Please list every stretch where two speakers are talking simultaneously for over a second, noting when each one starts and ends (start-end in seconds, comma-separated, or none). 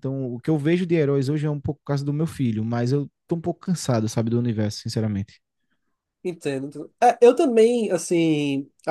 none